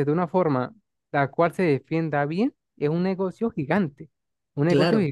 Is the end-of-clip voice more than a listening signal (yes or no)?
no